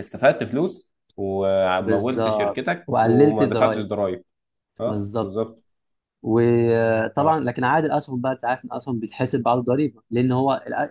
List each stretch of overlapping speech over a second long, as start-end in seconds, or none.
1.8-3.9